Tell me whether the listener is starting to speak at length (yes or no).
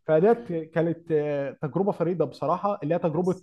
no